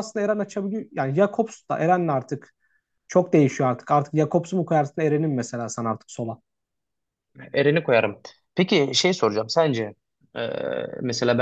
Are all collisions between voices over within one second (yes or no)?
yes